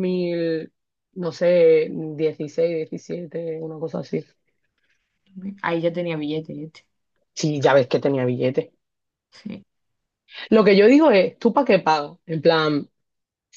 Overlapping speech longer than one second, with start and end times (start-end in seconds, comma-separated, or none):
none